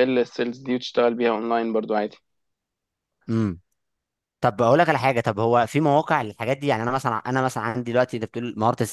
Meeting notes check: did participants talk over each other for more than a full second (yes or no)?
no